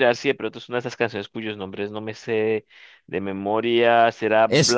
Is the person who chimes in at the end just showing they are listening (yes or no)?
no